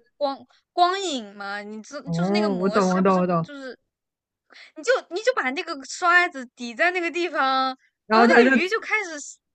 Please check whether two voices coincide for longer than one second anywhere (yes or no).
yes